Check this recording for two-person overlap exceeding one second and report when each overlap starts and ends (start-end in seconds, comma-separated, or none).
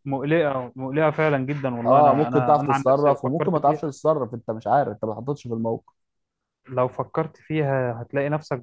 1.9-3.9